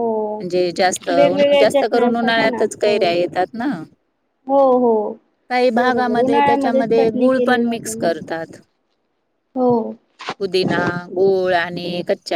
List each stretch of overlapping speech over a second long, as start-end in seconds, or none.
1.2-3.1, 5.8-8.1